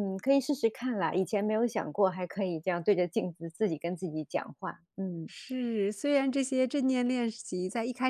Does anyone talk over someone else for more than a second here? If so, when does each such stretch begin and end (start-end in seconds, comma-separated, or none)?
none